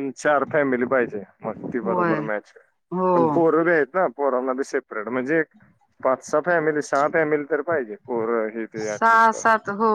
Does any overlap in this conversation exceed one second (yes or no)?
no